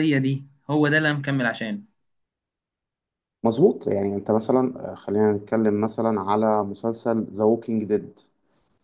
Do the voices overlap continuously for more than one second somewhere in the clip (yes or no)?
no